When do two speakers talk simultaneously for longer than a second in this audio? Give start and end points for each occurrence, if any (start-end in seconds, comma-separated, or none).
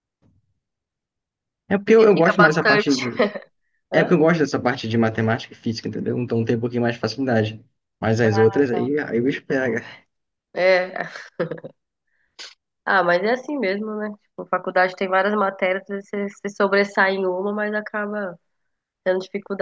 1.8-3.2